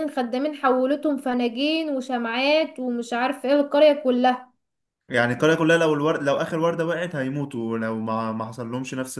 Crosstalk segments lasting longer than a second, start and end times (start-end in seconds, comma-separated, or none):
none